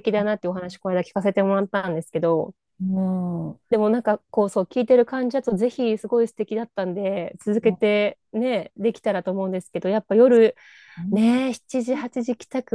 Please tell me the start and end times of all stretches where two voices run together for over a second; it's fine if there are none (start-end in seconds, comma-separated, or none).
none